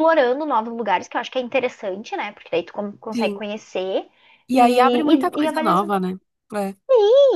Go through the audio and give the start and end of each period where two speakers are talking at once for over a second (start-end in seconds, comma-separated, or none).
4.5-5.9